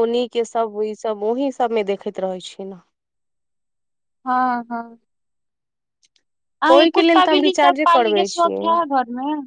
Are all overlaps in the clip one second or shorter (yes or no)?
no